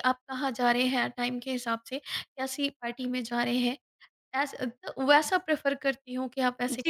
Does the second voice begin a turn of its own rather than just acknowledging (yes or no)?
yes